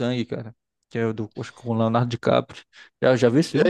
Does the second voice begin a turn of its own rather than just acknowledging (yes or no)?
yes